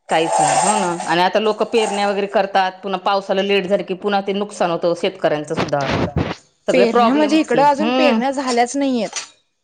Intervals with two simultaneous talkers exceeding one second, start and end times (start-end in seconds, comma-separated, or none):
6.7-8.2